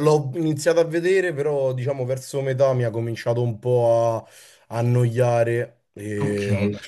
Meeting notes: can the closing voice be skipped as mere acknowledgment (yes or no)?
no